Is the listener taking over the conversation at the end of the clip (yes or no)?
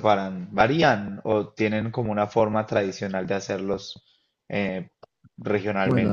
yes